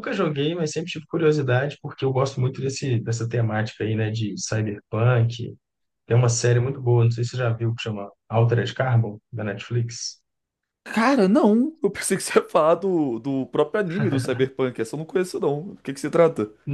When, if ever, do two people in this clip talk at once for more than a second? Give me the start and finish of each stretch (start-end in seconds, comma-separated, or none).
none